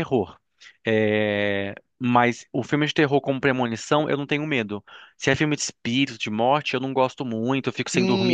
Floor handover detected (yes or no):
yes